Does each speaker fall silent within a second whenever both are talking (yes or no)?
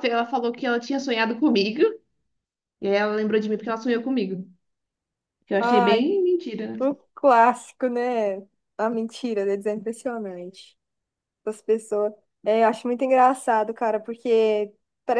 yes